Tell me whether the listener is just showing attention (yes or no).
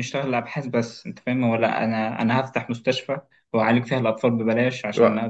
yes